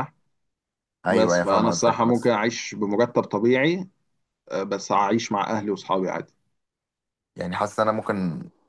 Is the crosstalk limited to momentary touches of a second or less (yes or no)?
no